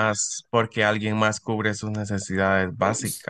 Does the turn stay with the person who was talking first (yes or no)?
yes